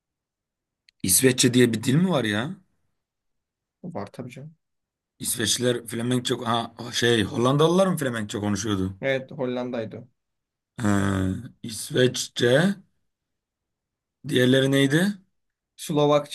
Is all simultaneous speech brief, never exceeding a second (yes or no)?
yes